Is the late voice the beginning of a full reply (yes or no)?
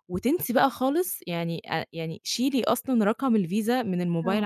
no